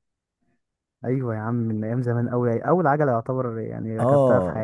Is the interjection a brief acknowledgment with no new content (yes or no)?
no